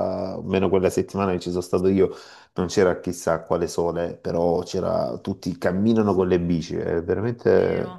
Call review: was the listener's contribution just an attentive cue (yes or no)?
no